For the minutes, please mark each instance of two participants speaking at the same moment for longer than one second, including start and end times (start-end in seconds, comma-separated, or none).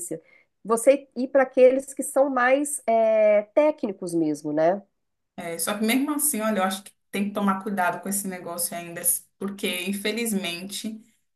none